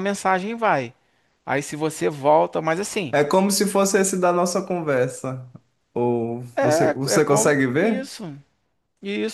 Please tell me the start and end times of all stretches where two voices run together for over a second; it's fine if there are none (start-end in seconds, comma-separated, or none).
6.5-8.1